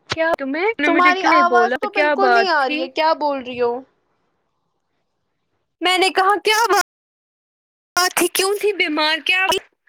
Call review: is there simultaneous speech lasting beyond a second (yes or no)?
yes